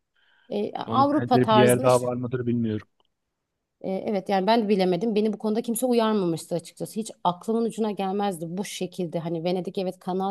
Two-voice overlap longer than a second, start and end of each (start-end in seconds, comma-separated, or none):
0.9-2.1